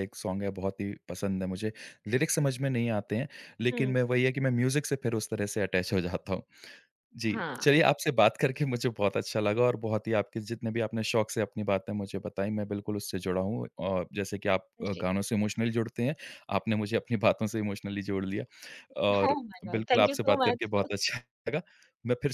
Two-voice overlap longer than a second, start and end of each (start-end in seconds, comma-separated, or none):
19.3-20.9